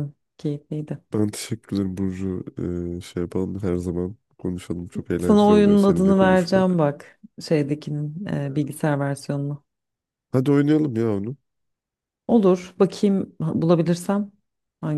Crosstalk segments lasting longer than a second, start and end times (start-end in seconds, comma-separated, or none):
5.2-6.8